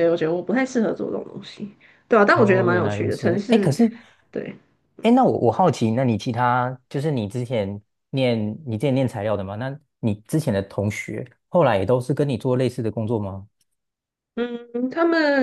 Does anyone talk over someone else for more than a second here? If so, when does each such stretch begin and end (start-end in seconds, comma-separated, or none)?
2.3-3.7